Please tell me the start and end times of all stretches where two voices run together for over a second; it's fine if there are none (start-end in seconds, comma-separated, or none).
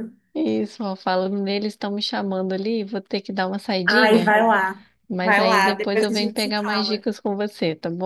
5.1-7.0